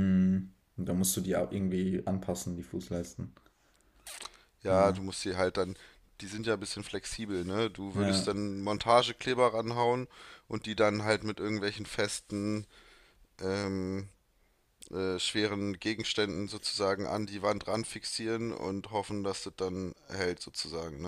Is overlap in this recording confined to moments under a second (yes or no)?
yes